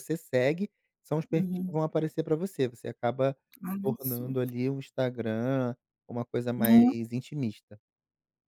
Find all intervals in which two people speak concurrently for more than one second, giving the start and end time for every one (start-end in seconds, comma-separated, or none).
none